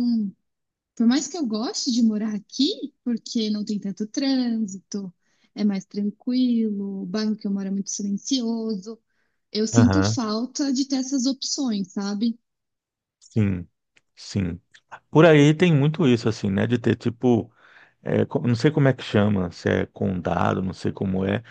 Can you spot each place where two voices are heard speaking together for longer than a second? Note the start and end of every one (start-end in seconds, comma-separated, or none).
none